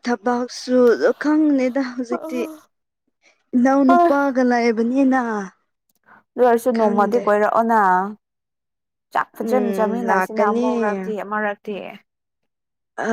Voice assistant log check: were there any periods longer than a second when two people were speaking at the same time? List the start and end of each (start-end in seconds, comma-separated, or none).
9.3-10.7